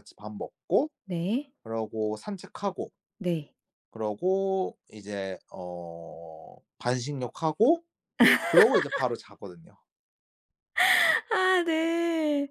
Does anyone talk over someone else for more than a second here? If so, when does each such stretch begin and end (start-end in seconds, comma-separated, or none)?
none